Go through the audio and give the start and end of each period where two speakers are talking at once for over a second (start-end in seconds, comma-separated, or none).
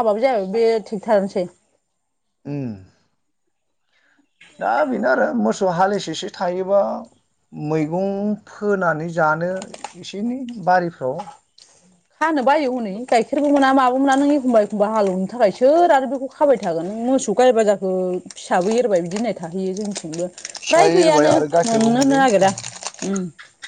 20.7-22.5